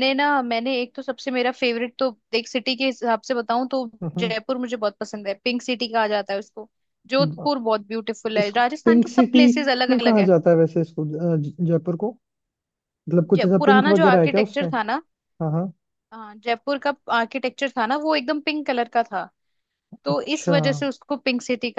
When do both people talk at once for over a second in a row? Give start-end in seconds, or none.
8.4-10.3, 13.4-14.7